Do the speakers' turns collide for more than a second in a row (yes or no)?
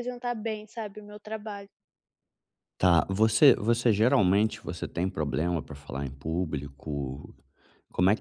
no